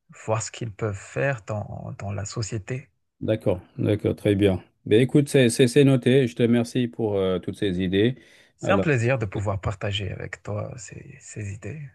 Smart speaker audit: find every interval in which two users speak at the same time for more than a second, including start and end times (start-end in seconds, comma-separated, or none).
none